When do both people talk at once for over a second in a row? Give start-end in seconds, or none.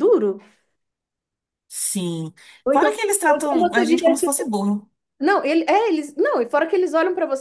2.7-4.3